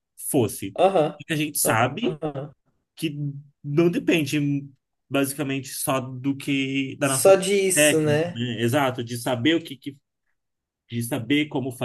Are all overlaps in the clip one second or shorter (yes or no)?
no